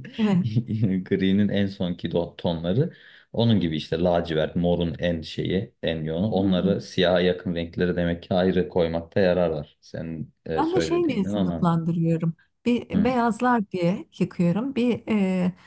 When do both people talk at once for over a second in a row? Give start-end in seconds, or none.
10.6-11.8